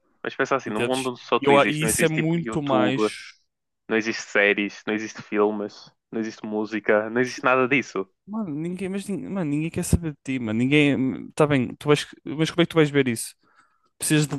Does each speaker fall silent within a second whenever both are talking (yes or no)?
no